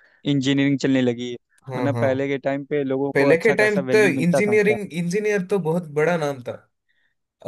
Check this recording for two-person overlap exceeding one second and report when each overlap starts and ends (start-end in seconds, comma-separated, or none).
3.1-4.8